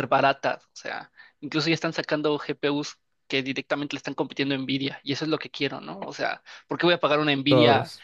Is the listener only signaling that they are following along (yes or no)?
yes